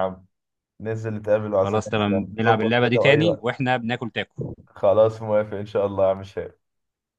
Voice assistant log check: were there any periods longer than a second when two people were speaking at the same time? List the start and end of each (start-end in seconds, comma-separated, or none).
1.6-3.5